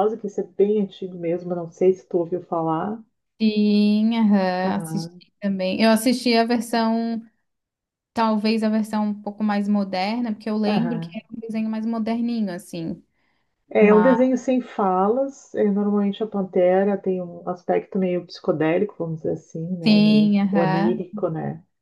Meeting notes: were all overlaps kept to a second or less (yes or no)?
no